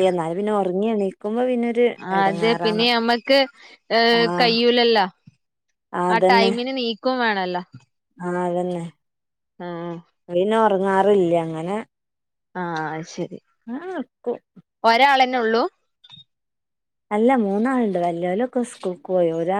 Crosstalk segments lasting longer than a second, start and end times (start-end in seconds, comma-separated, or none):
none